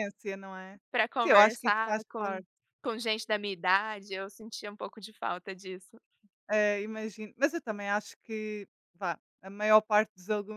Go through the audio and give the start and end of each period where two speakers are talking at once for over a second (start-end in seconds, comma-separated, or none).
1.2-2.4